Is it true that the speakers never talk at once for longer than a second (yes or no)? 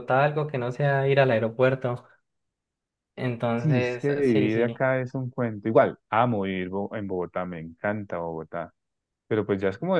no